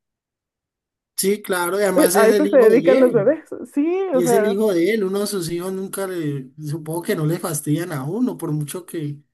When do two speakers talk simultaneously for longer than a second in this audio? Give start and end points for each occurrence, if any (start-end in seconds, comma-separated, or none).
2.0-3.4